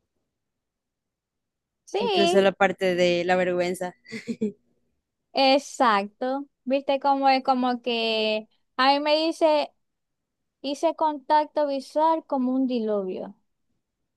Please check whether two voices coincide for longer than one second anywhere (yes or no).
no